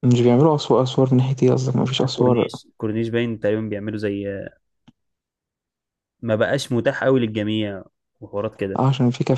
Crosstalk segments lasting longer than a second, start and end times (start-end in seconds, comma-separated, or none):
none